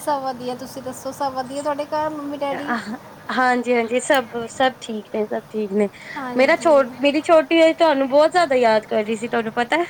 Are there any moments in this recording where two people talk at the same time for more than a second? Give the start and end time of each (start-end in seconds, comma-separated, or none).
none